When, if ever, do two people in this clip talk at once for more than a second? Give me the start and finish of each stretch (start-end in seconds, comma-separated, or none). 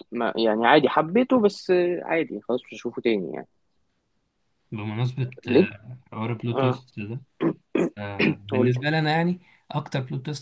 none